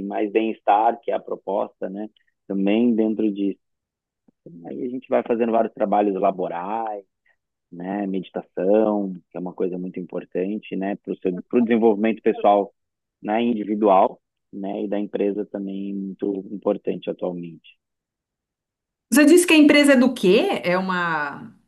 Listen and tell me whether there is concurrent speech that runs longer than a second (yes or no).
no